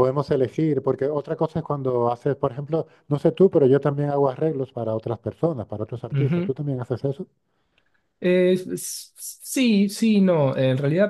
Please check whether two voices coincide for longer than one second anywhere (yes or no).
no